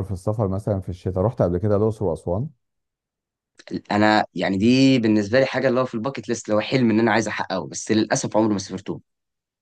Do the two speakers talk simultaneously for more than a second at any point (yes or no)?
no